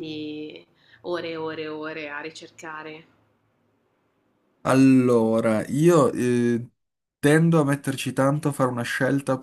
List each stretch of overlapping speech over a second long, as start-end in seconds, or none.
none